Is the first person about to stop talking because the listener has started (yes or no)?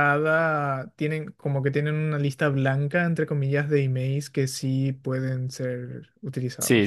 yes